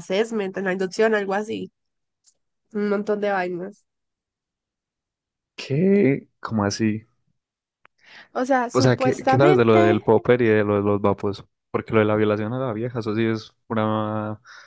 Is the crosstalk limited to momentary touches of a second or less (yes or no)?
no